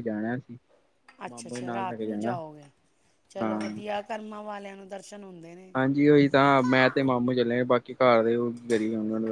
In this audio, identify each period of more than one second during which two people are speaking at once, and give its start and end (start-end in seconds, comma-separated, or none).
none